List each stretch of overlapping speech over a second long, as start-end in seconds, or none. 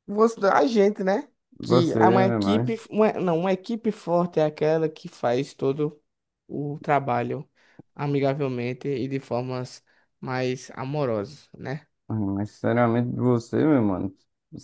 1.6-2.9